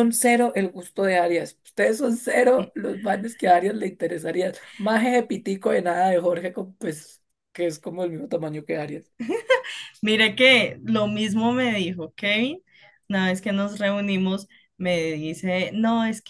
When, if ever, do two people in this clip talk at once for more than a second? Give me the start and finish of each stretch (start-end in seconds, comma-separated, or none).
none